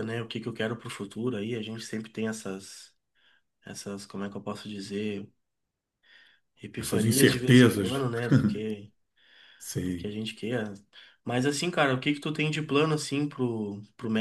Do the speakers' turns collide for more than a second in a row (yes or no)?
yes